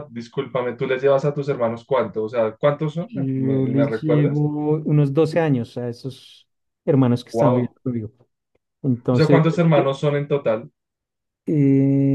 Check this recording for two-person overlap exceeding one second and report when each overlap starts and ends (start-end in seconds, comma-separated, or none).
3.1-4.4